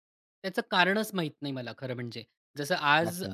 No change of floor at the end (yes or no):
yes